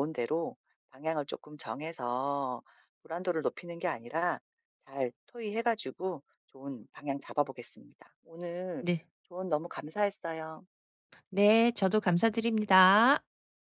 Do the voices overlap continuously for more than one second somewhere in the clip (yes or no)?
no